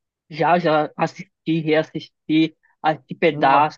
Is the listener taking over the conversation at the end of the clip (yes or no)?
no